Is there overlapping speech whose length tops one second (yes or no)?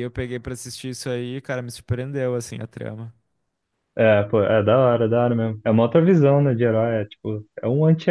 no